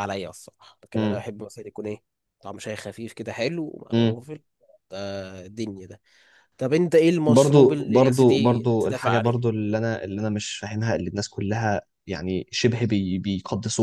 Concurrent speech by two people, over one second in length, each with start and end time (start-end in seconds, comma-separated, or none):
7.3-9.3